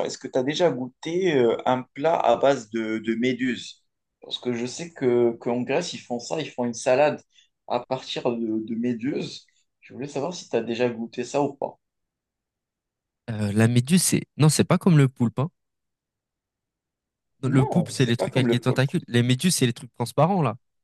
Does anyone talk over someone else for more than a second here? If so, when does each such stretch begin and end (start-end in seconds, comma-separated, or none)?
17.5-18.9